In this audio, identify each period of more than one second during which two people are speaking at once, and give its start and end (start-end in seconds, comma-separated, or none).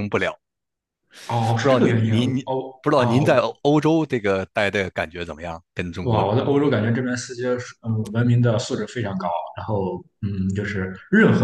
1.6-3.5